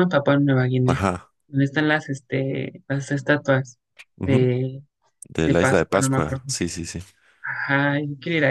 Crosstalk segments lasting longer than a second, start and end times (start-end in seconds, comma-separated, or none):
5.4-6.6